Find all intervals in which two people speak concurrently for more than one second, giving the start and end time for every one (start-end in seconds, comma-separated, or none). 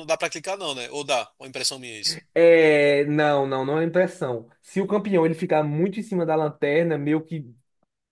none